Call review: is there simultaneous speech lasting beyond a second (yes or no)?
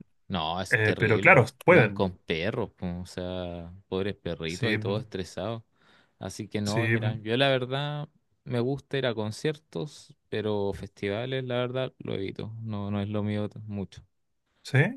yes